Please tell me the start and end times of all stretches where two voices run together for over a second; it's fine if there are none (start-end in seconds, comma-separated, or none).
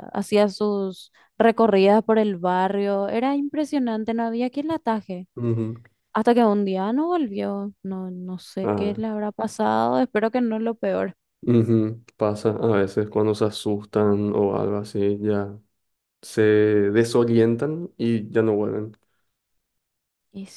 none